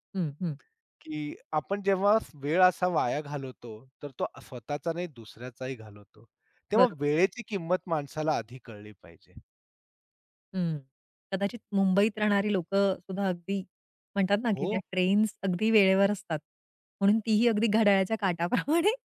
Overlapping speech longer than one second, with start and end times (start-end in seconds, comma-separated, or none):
none